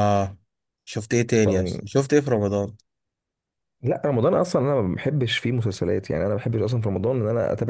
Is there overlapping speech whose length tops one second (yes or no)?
no